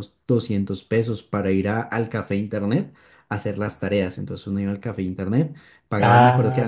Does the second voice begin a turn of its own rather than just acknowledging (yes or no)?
yes